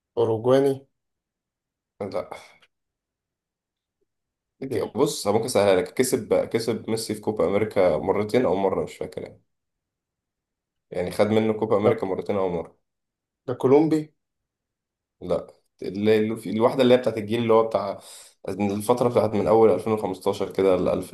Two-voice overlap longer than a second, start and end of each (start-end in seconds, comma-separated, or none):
none